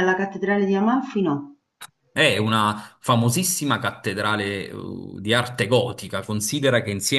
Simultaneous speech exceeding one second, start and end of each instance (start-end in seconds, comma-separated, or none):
none